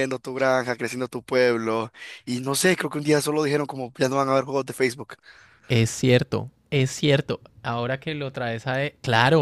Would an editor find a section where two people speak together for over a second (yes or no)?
no